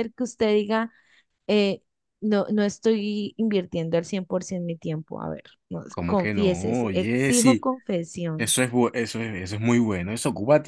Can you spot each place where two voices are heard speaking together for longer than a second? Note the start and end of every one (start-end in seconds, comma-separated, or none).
5.9-7.7